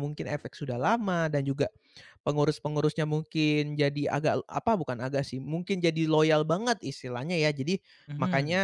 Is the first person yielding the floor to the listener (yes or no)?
no